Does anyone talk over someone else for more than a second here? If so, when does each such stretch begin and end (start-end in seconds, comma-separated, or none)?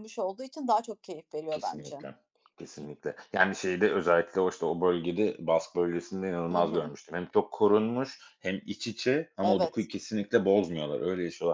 none